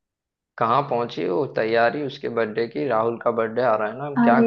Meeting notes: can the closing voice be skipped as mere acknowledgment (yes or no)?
no